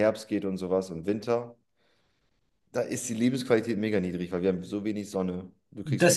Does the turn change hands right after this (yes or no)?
yes